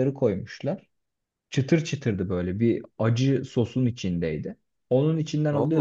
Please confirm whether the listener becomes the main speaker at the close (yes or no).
no